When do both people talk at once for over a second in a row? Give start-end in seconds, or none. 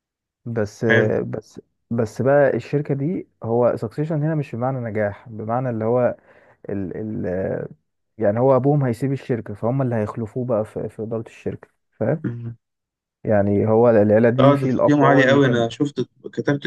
14.4-15.7